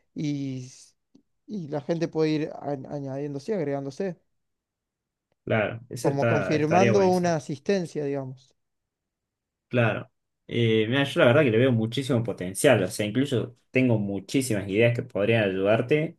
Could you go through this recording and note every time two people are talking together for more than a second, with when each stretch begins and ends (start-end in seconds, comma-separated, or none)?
6.0-7.3